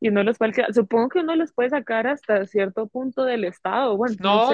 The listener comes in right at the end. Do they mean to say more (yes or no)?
yes